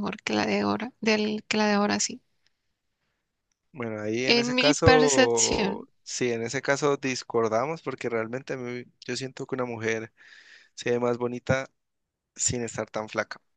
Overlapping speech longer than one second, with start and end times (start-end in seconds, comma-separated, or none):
4.2-5.9